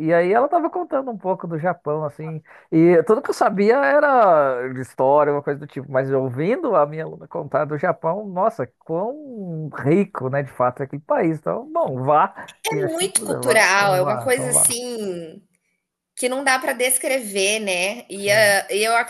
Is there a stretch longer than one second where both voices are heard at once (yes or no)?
yes